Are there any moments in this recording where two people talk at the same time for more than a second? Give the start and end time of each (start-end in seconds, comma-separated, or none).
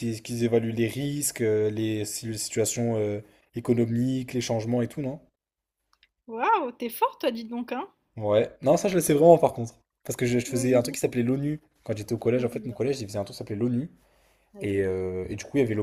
none